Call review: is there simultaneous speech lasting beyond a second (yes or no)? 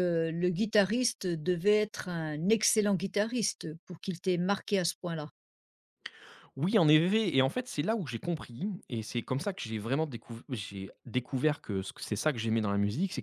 no